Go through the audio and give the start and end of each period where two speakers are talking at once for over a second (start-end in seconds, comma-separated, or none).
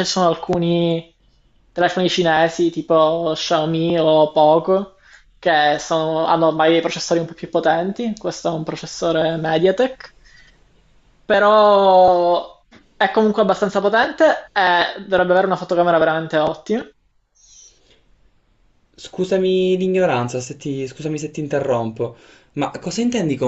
none